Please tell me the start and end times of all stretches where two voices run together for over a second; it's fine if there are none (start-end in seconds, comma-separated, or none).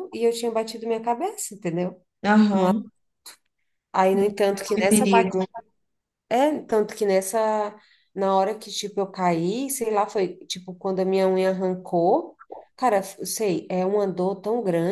4.1-5.4